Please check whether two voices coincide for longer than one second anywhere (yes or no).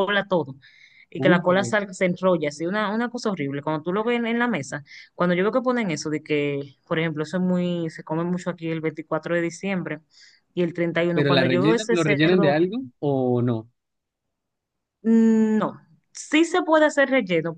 yes